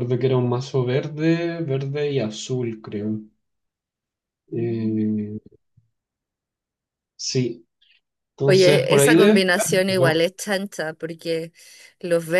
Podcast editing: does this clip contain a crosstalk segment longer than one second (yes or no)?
yes